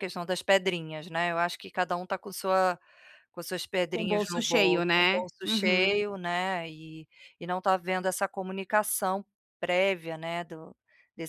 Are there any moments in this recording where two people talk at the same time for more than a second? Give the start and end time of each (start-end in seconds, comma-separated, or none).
3.9-6.0